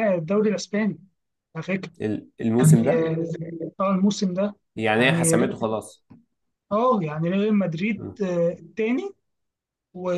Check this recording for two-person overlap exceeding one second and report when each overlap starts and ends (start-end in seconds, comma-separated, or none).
none